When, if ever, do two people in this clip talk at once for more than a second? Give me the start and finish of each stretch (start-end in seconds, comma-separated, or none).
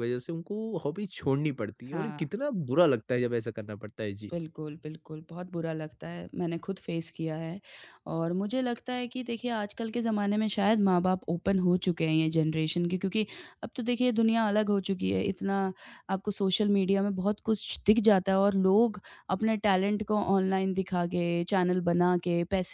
none